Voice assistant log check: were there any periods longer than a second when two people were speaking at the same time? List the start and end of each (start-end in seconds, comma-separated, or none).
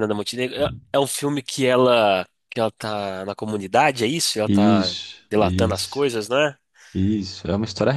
4.5-6.1